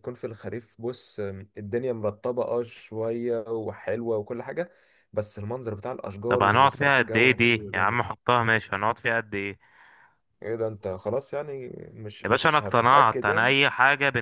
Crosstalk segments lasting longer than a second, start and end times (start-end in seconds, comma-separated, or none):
6.3-8.0, 12.2-13.5